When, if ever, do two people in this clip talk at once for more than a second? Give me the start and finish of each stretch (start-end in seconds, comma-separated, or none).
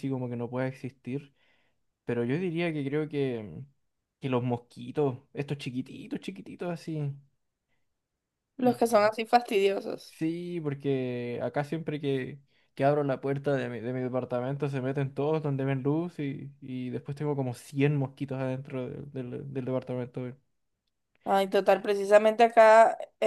none